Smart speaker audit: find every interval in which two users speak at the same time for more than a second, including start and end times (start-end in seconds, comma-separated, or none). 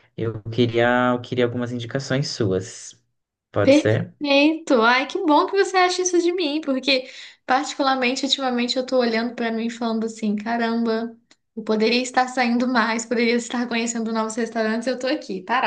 none